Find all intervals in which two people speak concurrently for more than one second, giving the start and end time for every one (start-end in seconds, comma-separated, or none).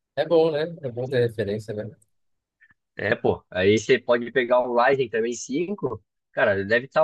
none